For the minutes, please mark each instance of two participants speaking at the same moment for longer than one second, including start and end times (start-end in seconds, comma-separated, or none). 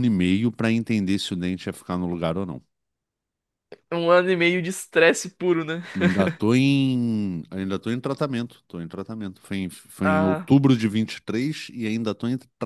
none